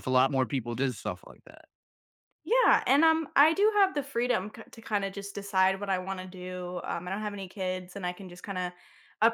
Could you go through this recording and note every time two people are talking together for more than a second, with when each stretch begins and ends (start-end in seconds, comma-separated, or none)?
none